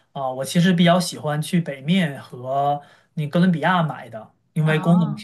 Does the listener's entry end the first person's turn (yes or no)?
no